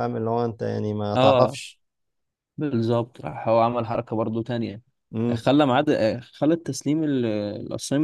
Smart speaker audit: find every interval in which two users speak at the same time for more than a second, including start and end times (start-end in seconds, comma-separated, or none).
none